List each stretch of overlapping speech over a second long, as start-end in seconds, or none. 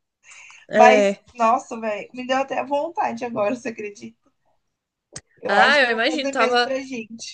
5.5-6.7